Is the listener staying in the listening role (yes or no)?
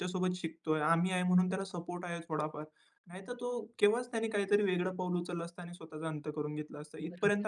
no